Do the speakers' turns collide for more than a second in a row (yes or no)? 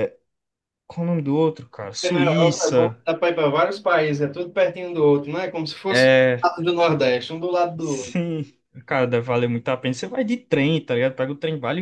yes